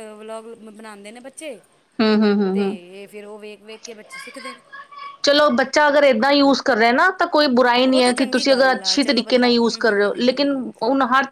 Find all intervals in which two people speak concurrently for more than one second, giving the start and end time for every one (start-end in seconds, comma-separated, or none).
7.8-10.7